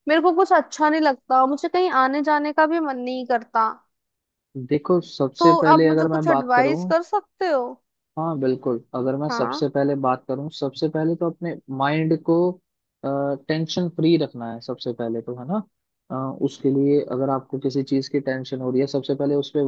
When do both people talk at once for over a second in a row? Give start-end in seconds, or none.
5.4-6.9